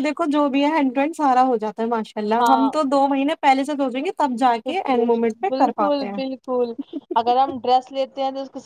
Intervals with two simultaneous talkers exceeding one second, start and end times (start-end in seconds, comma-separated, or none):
4.7-6.2